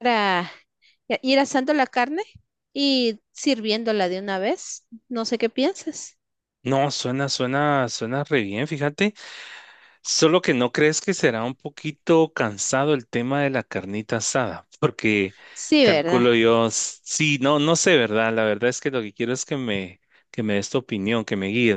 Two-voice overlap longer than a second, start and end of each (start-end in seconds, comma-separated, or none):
none